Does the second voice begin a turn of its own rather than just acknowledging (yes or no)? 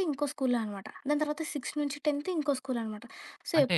yes